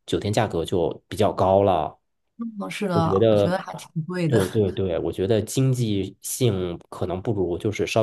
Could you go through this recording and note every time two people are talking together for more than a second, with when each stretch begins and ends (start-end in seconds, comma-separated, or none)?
none